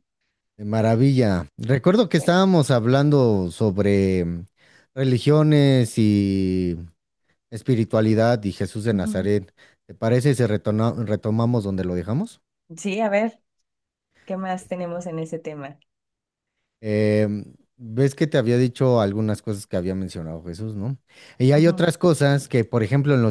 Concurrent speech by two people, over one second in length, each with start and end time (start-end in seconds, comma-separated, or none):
none